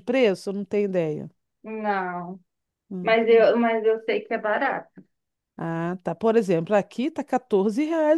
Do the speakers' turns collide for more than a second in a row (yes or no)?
no